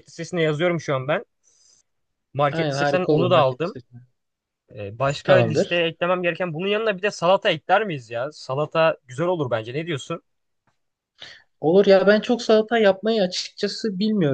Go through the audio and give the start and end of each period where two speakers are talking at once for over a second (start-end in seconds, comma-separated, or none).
2.5-3.8